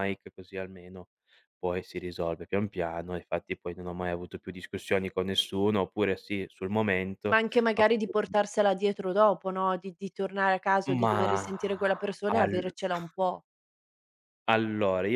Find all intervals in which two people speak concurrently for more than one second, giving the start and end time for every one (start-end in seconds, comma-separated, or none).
none